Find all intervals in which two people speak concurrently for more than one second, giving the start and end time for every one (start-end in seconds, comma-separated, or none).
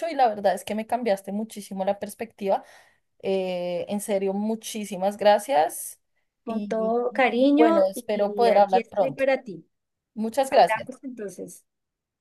6.5-9.2